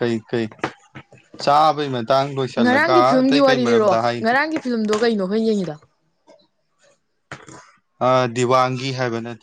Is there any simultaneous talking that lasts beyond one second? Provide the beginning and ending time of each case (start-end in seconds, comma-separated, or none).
2.6-4.2